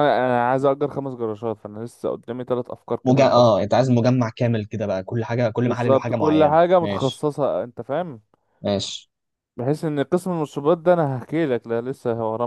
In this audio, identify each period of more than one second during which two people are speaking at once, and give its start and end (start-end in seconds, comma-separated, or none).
5.7-7.3